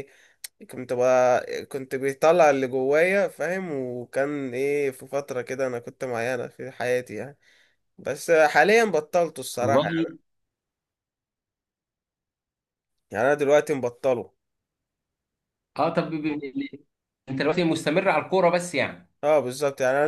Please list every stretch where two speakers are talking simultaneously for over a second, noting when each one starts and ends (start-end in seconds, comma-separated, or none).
none